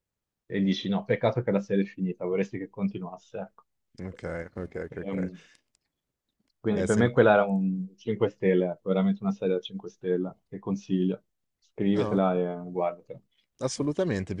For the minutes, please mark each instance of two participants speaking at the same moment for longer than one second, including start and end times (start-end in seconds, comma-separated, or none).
none